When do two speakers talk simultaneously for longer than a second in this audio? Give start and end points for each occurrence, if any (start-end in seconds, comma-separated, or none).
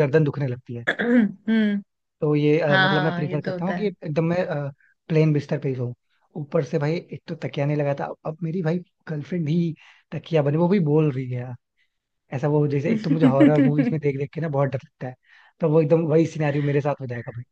2.7-3.9